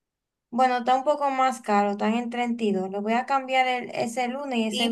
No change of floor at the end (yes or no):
no